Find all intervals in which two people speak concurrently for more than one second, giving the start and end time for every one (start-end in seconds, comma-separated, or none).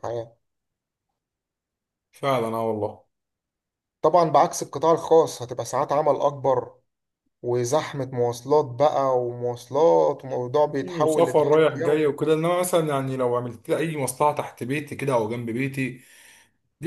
10.6-12.0